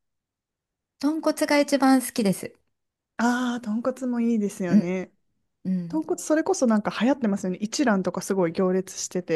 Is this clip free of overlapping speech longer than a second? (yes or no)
yes